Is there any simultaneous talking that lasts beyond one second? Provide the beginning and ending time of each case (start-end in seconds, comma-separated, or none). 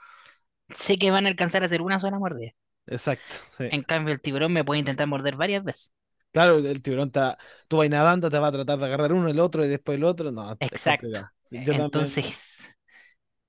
10.6-12.4